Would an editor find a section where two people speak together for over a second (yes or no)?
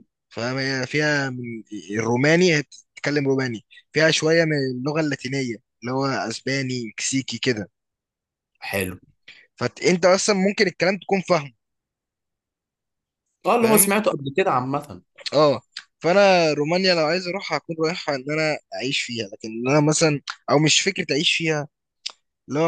no